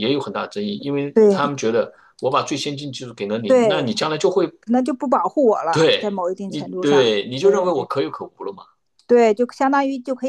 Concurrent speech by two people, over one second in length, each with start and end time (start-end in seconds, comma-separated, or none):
5.7-7.7